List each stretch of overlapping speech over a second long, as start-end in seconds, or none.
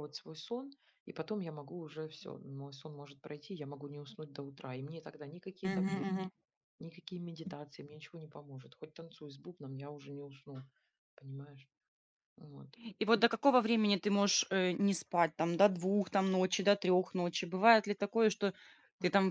none